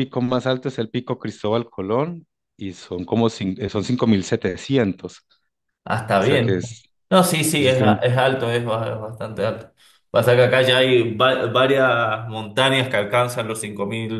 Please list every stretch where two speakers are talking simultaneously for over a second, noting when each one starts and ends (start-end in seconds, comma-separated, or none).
none